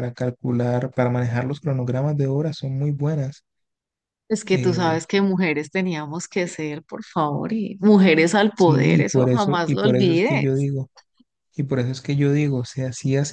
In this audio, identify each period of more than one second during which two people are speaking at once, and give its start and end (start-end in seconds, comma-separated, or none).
8.5-10.7